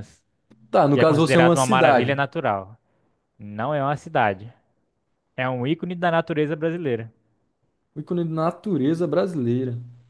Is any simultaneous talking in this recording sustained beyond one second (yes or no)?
yes